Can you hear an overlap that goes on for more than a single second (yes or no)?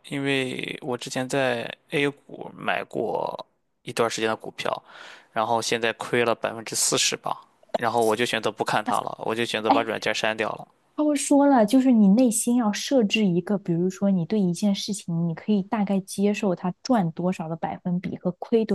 no